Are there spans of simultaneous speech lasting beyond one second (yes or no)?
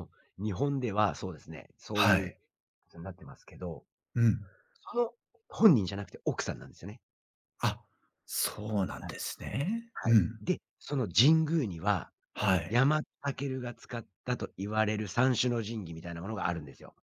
no